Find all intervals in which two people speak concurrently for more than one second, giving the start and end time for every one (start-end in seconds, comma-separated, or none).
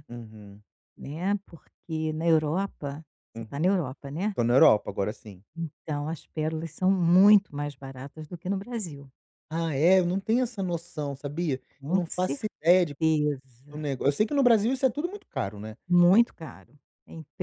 none